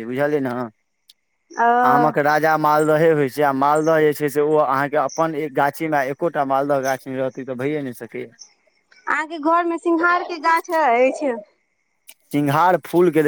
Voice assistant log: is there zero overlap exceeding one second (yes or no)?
yes